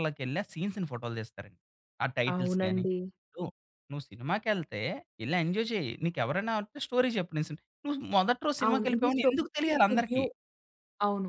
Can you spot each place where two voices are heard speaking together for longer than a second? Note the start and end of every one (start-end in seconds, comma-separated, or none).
8.7-10.2